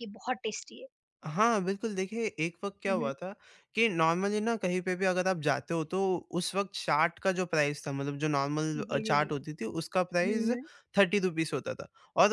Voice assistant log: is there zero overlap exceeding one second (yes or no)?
yes